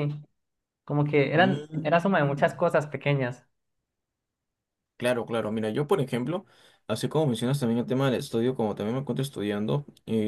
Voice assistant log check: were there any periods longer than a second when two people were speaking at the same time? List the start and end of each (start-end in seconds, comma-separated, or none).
1.3-2.5